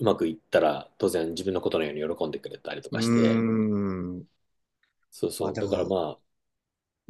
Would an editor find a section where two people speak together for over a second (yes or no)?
no